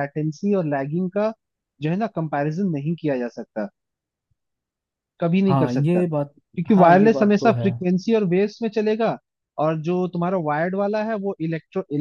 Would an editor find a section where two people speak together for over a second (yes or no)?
yes